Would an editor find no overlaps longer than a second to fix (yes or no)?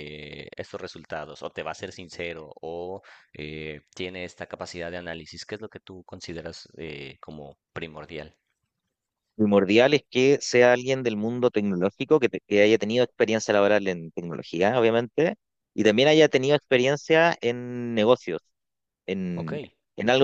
yes